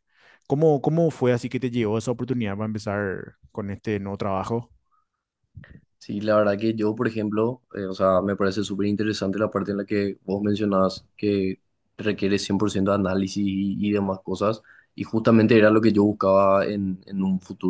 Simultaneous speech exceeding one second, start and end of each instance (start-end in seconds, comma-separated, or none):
none